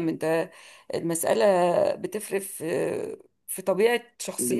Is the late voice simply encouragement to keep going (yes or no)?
yes